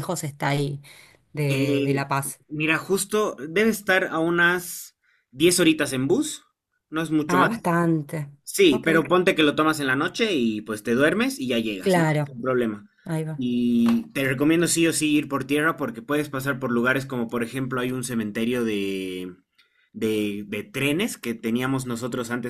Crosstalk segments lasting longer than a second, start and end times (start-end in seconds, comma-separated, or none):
none